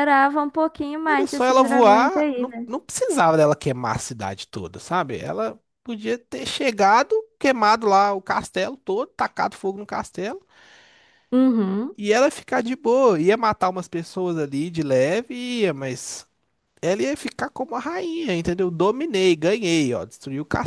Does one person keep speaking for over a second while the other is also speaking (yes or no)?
yes